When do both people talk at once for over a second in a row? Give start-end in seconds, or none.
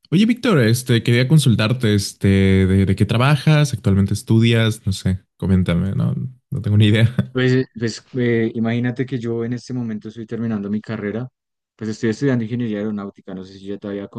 none